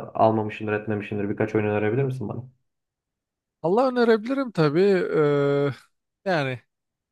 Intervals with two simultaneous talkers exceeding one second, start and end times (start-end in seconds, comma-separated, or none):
none